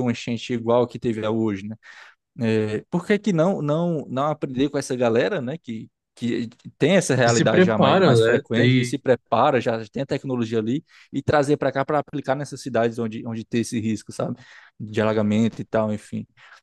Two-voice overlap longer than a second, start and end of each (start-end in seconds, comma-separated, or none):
7.2-9.0